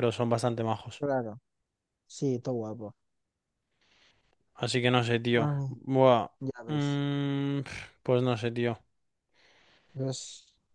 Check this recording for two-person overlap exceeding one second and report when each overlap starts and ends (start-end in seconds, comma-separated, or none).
none